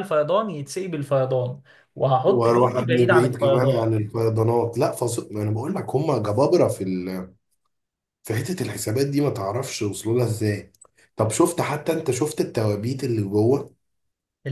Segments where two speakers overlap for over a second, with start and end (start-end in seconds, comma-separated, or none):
2.3-3.9